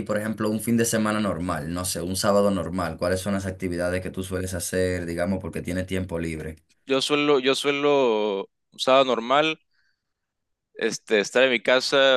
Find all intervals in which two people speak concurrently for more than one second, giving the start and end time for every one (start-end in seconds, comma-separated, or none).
none